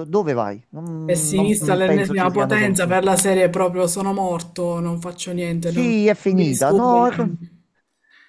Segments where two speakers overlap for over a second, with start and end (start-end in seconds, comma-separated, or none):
1.0-3.0, 5.6-7.3